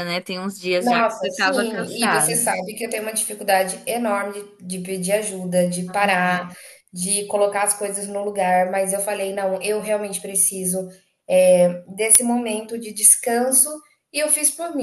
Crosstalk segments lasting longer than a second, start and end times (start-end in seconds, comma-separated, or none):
0.8-2.5